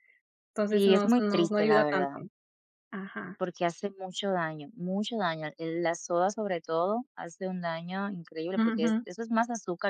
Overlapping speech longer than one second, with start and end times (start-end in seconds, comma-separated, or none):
0.7-2.2